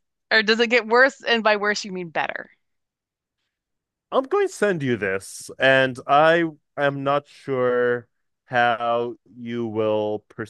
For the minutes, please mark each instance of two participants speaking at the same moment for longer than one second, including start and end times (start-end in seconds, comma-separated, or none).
none